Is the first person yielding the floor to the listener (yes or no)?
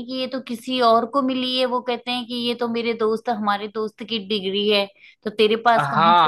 yes